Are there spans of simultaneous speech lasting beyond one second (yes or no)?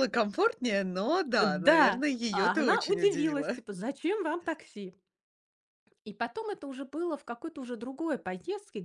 yes